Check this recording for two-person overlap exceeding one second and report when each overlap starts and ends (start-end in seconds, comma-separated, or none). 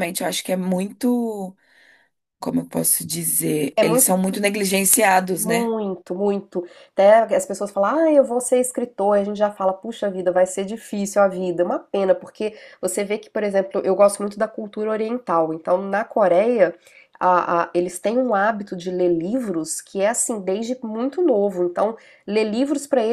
none